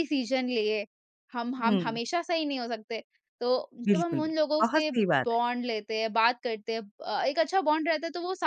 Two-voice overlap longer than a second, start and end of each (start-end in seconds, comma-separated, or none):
3.8-5.4